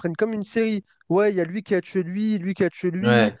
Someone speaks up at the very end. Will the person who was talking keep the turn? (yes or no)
yes